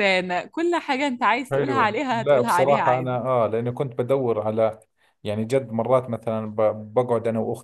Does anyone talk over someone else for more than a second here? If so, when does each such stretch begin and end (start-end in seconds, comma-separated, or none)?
1.5-3.2